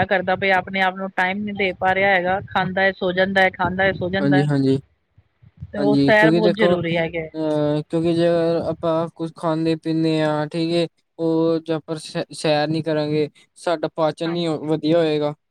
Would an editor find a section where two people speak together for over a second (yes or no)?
yes